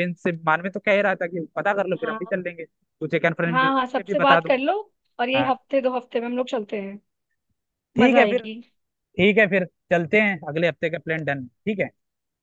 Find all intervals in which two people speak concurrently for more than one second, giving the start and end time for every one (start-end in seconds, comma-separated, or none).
3.5-4.7